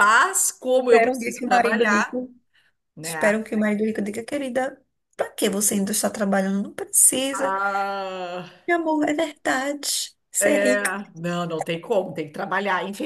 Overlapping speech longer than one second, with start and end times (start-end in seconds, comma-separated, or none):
0.8-2.2